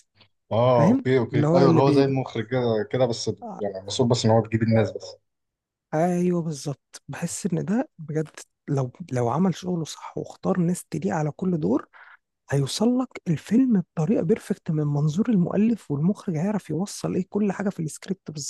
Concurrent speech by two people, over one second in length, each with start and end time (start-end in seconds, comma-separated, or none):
0.8-2.2